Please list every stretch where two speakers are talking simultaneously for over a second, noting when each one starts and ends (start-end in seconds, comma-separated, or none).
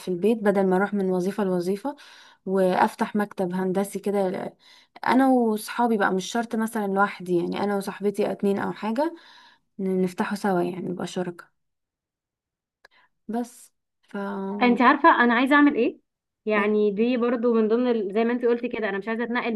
none